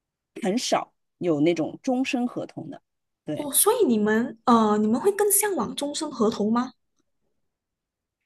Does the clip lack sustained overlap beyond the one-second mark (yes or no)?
yes